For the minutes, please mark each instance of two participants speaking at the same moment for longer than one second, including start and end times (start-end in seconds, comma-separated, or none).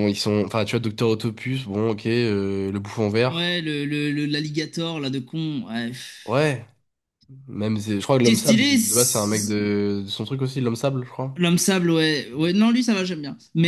8.2-9.6